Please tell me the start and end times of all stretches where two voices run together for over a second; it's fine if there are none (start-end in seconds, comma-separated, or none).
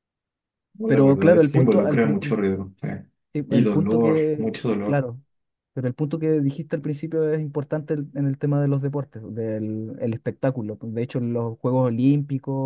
0.8-2.4, 3.5-5.0